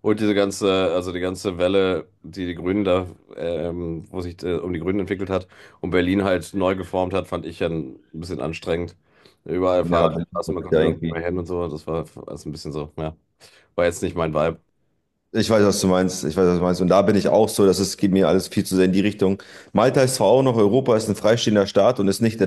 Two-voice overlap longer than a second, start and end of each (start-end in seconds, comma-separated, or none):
9.8-11.2